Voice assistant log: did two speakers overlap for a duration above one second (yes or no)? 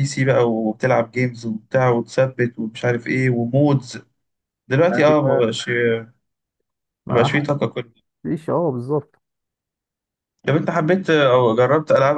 no